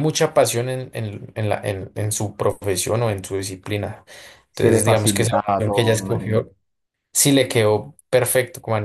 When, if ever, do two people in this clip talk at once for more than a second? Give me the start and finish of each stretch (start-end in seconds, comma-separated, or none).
4.5-6.5